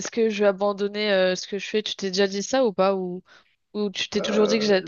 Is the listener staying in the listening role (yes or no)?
no